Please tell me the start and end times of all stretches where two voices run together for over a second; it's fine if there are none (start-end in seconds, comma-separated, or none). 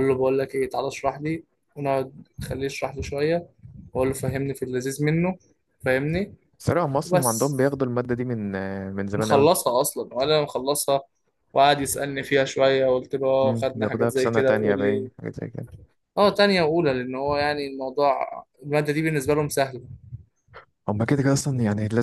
13.4-15.1